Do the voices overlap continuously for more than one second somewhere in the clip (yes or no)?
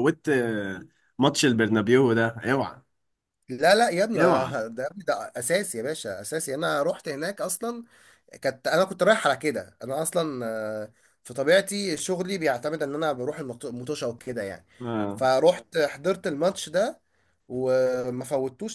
no